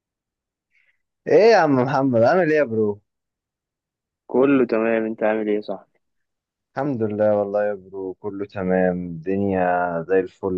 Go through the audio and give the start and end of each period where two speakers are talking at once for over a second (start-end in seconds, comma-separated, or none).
none